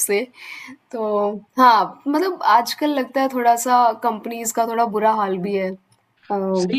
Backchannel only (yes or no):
no